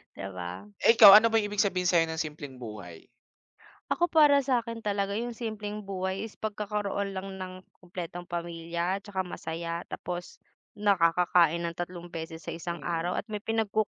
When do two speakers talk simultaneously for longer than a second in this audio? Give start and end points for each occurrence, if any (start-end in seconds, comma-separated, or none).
none